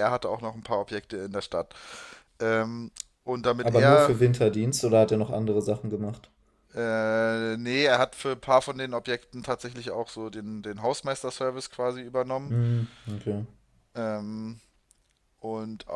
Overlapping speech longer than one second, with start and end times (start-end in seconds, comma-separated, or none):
none